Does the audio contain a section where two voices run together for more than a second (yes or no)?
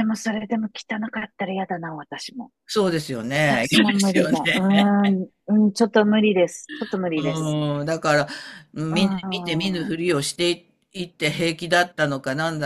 yes